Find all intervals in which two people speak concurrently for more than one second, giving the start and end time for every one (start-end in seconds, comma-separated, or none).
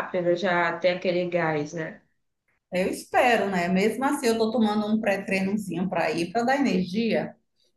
none